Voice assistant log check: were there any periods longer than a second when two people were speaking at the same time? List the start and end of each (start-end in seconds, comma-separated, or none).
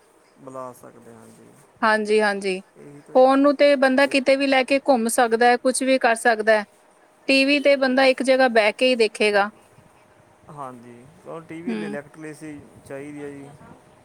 none